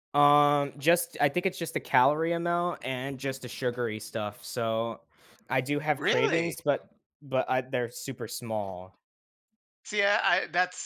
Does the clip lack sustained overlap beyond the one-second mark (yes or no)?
yes